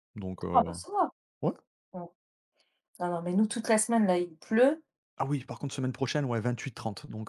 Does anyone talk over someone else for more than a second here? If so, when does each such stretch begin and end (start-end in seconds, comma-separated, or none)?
none